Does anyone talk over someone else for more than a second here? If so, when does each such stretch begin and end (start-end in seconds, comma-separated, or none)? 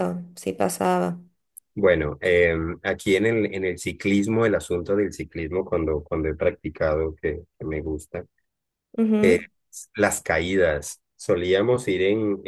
none